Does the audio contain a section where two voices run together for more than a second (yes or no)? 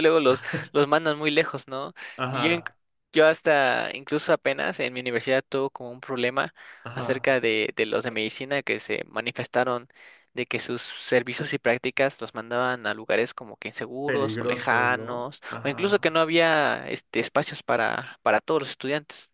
yes